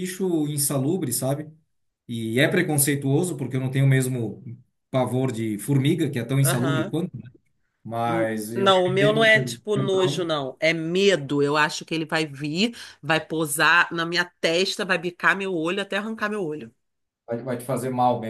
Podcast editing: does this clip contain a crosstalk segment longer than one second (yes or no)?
yes